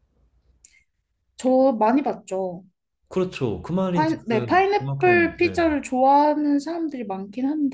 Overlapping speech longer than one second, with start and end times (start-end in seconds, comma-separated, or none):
3.9-5.6